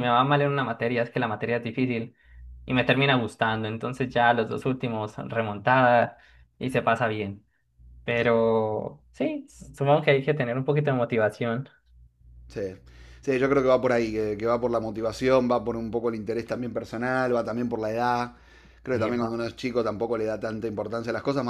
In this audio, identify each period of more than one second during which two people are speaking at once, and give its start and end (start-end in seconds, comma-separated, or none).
none